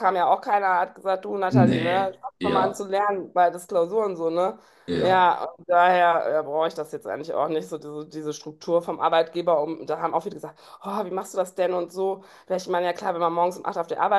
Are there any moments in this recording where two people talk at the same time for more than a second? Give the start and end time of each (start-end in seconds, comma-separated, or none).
1.5-2.8